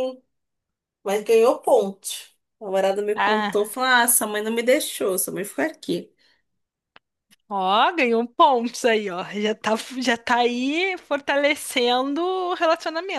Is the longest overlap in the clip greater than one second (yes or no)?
no